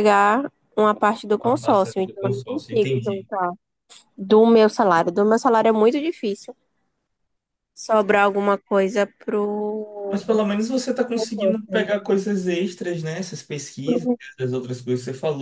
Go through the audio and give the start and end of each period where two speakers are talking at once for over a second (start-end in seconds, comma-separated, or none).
1.4-3.3